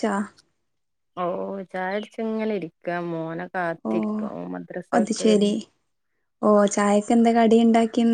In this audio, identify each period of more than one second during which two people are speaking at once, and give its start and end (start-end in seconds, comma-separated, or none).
none